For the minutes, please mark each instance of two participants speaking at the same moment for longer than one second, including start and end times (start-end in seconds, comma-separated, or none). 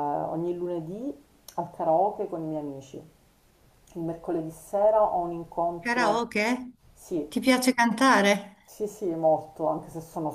none